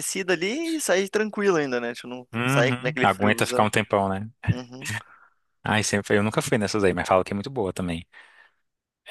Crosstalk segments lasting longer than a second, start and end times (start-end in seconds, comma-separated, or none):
2.3-3.7